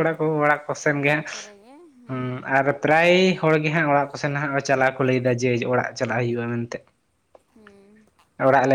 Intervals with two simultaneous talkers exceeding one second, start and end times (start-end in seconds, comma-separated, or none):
none